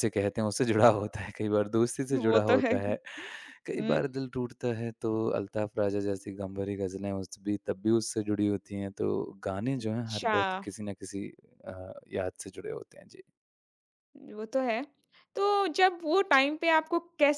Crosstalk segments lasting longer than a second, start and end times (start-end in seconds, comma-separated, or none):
none